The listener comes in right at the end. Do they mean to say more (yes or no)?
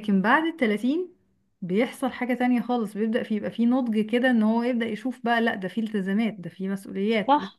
yes